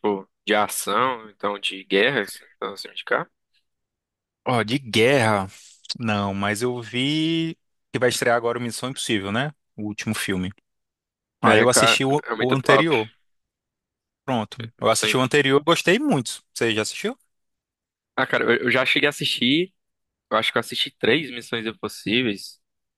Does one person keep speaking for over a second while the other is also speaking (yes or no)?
yes